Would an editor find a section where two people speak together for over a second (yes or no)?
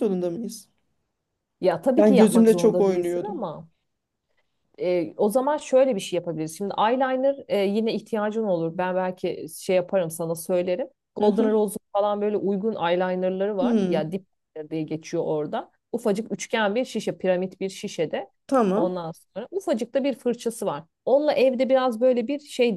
yes